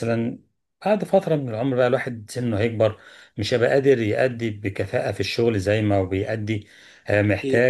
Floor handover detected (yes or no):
no